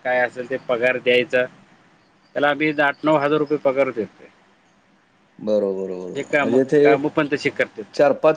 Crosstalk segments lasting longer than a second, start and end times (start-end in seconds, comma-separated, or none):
none